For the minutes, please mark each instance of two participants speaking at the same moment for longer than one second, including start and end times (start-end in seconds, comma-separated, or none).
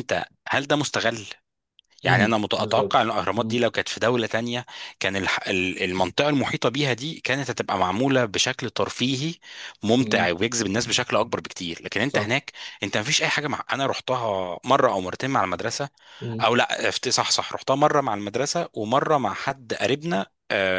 2.0-3.6